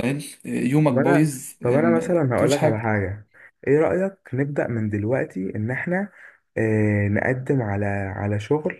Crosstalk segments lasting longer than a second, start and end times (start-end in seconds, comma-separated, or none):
0.9-2.8